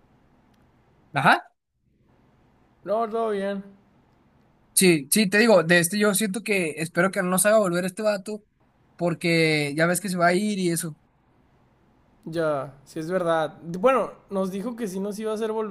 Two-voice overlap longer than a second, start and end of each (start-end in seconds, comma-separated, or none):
none